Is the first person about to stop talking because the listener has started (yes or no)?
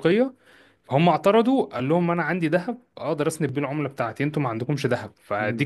no